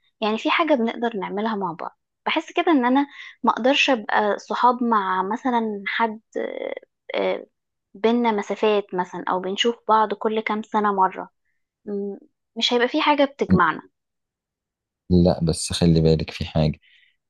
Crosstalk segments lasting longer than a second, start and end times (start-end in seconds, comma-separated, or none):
none